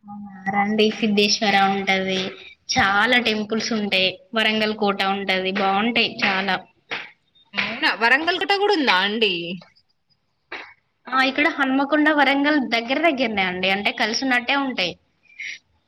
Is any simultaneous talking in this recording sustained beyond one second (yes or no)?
no